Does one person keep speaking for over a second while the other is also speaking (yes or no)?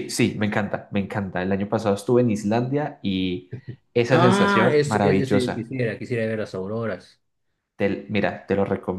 yes